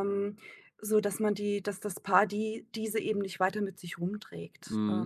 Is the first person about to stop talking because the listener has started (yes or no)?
yes